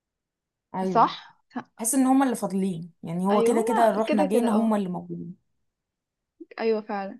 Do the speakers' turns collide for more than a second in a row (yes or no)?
yes